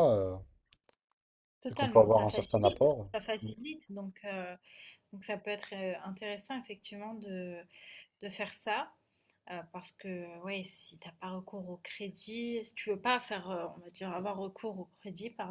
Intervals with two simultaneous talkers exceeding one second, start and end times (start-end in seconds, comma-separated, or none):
1.7-3.5